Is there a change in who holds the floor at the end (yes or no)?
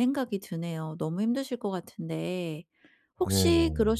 no